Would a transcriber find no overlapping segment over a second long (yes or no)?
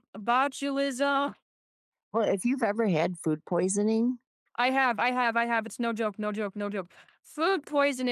yes